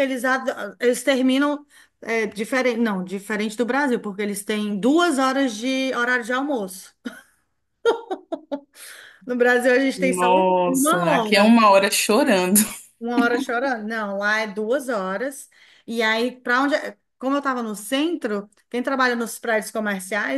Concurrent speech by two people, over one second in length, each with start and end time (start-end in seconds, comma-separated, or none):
10.0-11.5